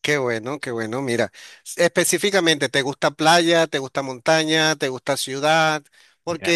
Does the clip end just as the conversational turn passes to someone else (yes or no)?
no